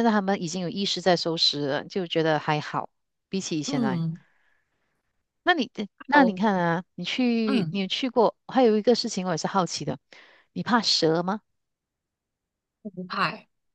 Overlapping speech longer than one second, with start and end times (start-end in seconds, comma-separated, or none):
none